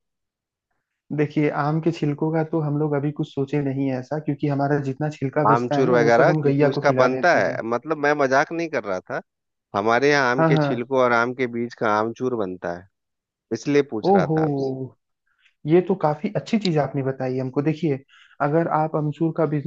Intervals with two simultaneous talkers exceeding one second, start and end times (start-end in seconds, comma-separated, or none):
5.5-7.6